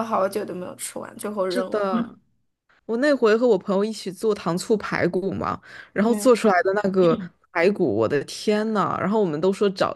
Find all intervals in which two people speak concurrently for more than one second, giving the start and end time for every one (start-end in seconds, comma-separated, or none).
none